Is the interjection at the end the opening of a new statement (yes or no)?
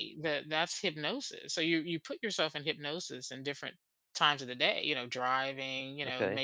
no